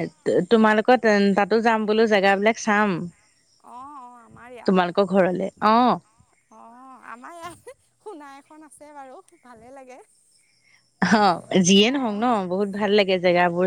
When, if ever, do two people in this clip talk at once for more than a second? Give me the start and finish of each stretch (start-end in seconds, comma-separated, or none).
none